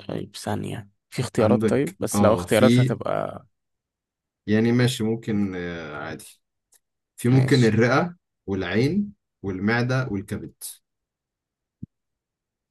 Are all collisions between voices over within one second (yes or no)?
no